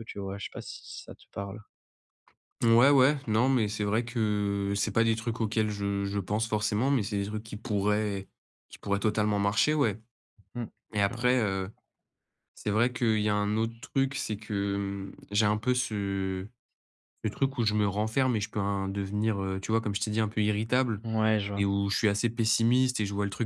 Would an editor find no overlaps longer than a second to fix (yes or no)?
yes